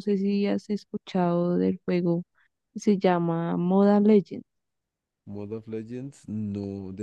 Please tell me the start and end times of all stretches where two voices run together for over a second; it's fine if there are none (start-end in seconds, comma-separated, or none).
none